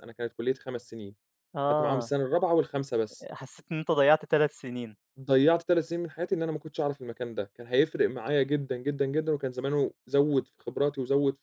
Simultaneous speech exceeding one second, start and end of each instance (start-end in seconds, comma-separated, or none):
none